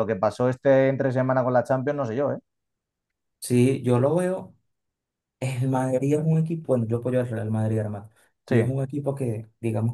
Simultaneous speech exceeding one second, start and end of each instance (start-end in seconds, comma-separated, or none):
none